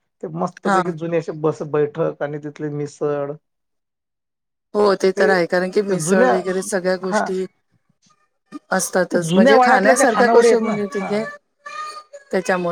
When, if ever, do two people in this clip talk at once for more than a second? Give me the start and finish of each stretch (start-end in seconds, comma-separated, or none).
9.1-11.1